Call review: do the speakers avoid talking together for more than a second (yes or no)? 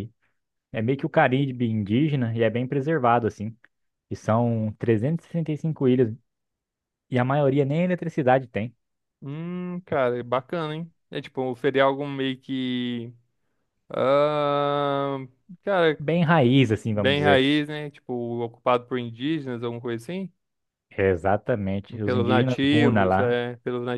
no